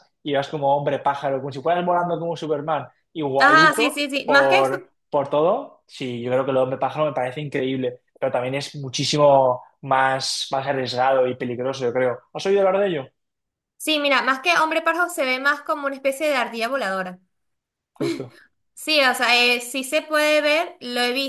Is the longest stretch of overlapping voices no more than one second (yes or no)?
no